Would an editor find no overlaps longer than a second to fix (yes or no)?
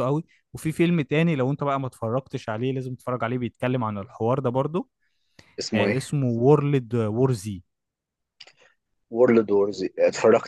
yes